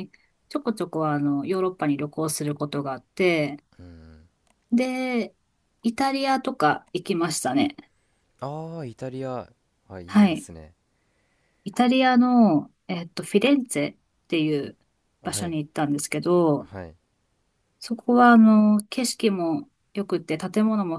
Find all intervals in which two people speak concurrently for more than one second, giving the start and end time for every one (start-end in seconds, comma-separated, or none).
none